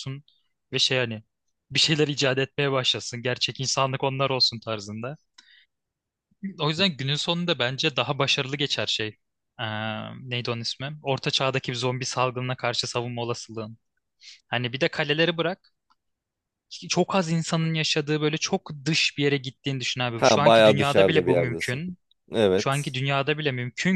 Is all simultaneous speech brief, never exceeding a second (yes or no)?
no